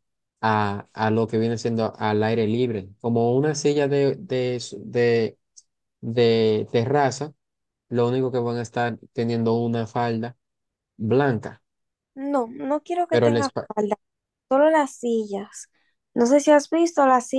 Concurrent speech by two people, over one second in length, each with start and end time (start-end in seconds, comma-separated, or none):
none